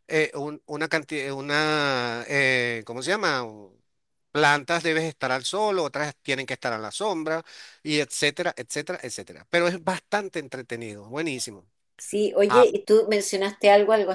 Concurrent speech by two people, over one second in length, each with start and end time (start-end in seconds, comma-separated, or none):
none